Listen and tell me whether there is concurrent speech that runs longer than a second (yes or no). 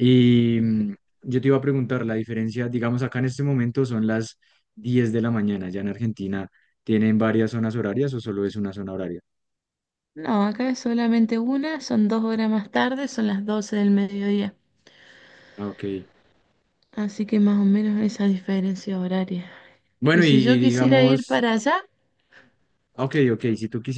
yes